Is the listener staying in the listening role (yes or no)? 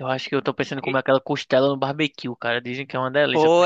no